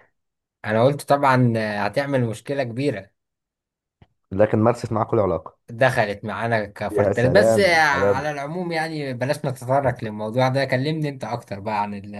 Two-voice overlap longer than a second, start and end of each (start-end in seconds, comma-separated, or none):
6.9-8.3